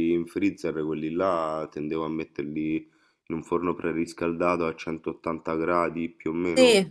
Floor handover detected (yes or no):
yes